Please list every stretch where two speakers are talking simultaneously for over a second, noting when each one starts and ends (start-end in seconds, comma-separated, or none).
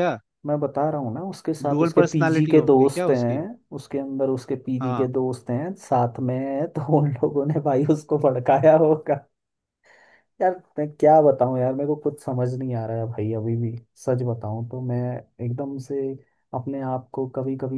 1.7-3.4